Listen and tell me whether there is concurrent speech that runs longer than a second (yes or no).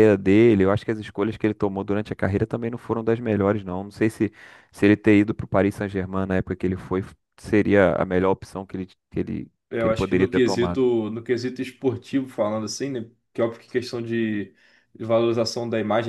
yes